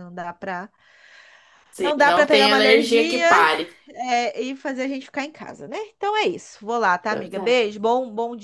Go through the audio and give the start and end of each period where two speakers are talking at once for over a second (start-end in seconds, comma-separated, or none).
1.8-3.2